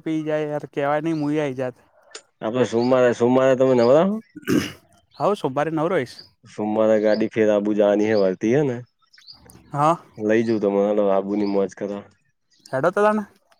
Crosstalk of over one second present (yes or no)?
no